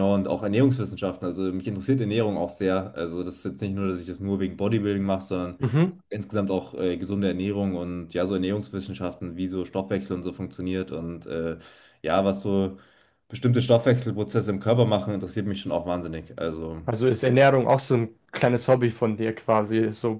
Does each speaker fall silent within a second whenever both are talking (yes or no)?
yes